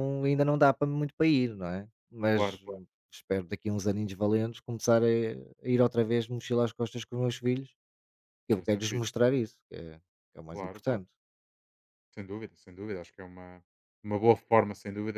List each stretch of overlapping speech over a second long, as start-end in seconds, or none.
none